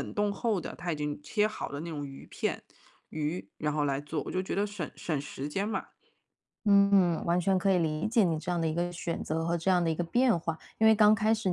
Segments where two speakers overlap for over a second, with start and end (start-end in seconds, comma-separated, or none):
none